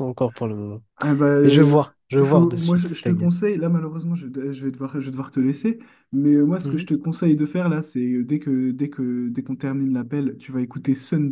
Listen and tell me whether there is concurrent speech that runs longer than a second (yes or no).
yes